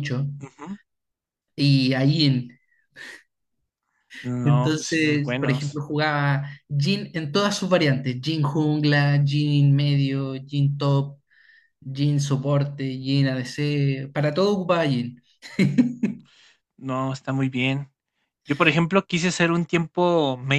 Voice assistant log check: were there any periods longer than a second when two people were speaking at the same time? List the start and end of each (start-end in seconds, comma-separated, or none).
4.4-5.8